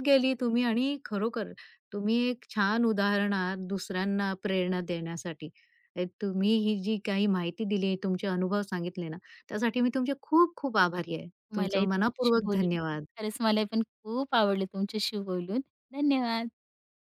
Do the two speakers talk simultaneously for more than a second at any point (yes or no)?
yes